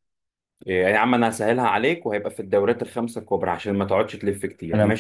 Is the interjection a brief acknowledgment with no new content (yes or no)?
no